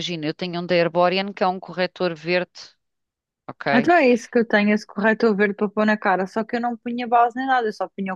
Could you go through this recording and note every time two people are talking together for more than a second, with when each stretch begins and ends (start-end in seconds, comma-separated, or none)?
none